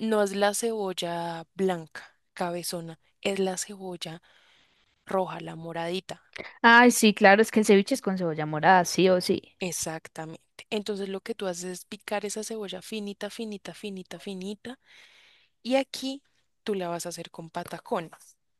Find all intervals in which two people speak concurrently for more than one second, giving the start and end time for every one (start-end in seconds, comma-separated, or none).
none